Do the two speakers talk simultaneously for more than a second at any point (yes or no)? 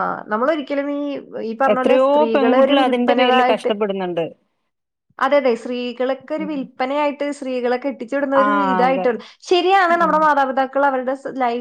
yes